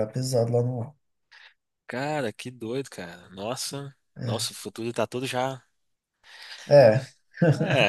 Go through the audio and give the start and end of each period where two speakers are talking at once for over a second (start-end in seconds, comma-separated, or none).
none